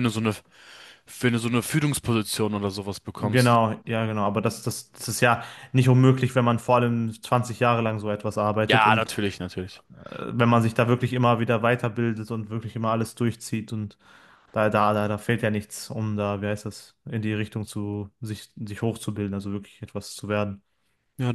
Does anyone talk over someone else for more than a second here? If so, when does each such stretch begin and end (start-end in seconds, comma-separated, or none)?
none